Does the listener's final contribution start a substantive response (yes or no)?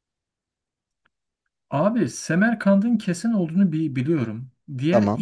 no